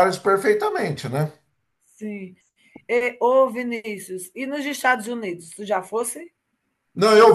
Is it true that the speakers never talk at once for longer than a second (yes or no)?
yes